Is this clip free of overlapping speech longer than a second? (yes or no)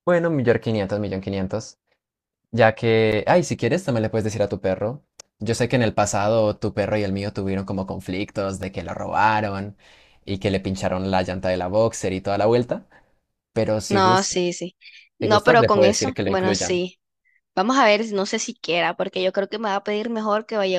no